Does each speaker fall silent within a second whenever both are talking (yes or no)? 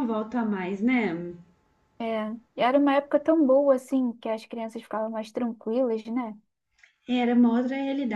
yes